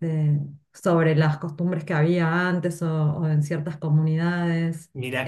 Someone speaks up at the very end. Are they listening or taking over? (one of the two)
taking over